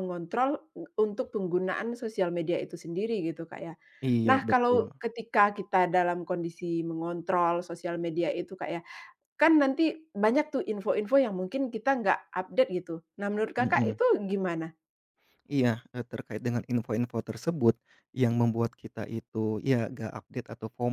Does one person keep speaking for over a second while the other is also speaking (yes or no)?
no